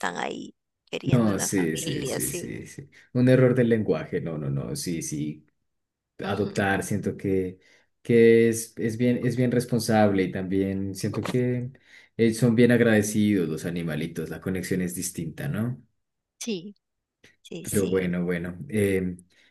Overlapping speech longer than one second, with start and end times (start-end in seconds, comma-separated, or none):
1.0-2.5